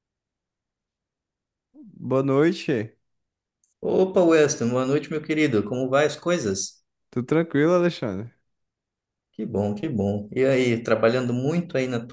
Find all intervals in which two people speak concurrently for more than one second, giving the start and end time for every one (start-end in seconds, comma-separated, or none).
none